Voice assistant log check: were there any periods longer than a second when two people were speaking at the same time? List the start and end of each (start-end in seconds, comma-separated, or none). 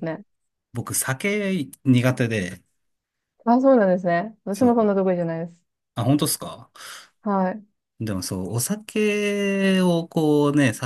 none